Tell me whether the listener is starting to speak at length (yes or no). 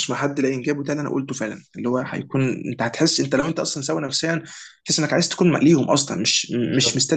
no